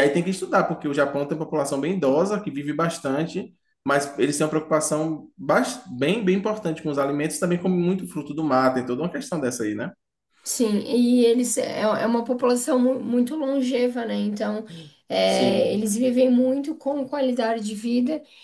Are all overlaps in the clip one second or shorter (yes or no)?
yes